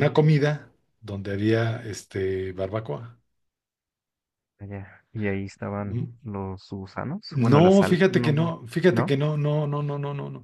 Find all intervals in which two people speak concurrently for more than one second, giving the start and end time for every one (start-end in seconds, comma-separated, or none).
7.3-9.2